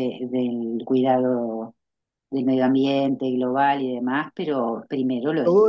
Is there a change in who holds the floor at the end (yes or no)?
yes